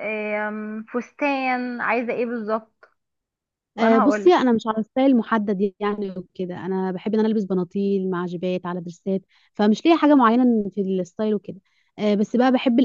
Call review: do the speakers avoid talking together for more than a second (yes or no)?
yes